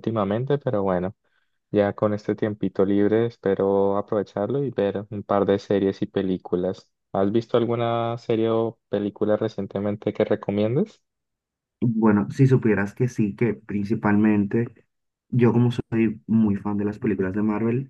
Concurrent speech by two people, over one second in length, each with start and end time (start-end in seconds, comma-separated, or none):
none